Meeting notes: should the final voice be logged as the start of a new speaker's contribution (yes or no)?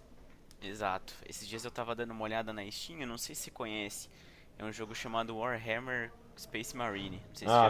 yes